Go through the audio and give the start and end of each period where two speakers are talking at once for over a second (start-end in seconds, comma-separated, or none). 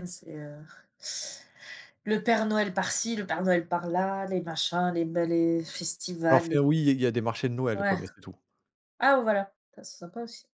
none